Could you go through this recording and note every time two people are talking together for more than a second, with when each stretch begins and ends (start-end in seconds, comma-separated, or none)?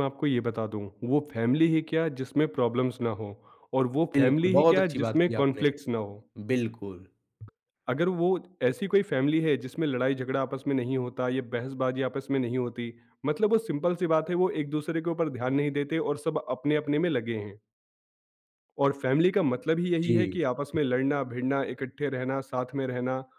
4.1-5.6